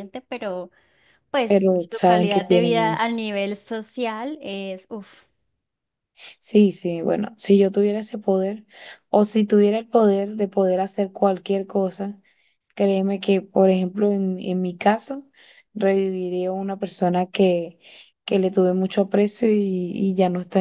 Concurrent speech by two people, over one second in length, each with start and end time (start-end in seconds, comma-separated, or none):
1.5-3.2